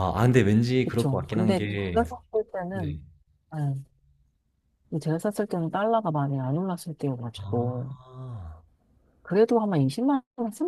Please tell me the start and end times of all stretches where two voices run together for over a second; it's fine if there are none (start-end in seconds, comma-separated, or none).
0.8-2.0